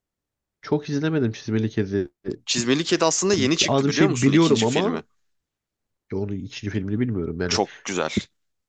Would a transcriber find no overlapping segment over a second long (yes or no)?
no